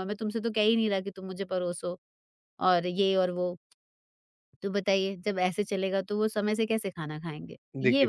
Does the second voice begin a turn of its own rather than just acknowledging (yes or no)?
yes